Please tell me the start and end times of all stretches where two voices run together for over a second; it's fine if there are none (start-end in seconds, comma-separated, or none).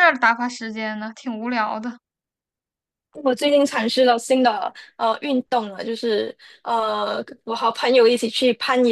none